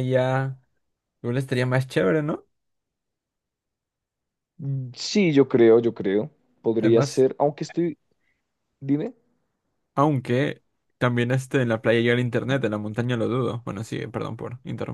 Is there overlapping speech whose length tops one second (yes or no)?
no